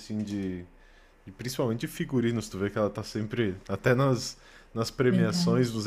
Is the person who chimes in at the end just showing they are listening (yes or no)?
yes